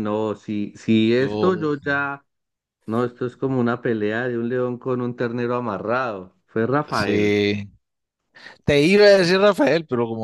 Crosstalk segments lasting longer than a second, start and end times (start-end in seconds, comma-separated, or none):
none